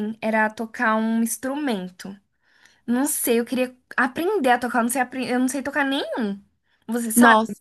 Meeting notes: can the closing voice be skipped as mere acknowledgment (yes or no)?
no